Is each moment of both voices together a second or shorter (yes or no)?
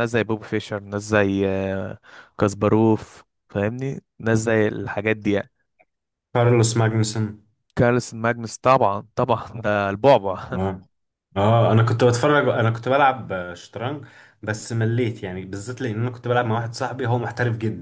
yes